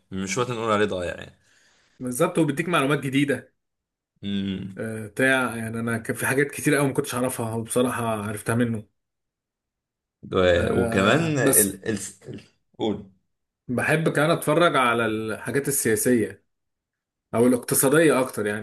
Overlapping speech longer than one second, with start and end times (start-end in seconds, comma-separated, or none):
10.6-11.8